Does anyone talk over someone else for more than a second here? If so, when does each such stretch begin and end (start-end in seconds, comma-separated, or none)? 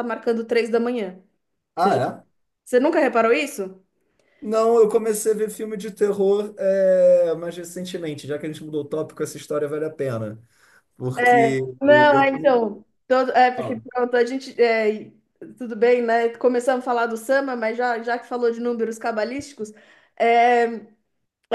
11.2-12.6